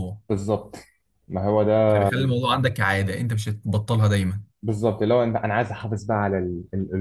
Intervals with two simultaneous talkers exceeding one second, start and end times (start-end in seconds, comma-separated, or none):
none